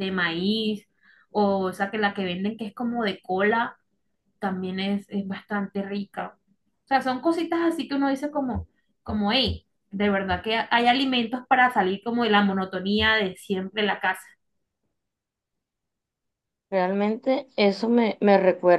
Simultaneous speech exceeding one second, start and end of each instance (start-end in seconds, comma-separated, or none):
none